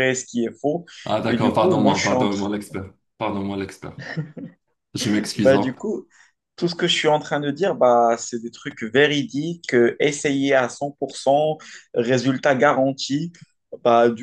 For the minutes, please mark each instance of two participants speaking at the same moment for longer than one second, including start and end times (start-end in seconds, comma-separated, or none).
1.2-2.5